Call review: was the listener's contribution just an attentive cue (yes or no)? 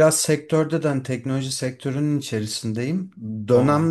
yes